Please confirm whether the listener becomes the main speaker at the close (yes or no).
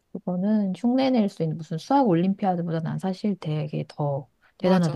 yes